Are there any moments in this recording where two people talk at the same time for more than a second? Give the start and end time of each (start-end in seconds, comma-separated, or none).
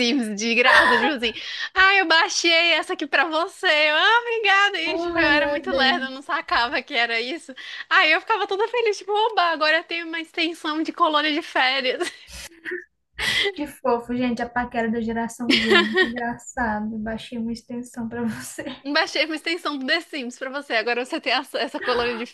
4.8-6.2